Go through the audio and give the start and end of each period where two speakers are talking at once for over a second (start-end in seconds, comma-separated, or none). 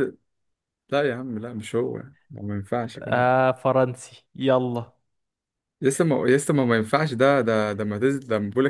none